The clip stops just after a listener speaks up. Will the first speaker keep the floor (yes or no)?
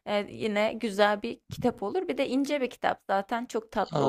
no